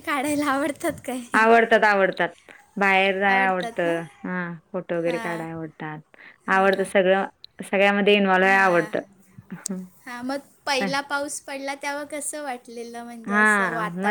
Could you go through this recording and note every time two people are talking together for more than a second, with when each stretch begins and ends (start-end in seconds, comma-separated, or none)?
none